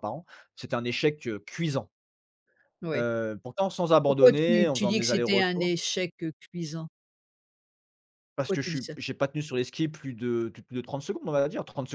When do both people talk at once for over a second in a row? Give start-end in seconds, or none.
4.0-5.7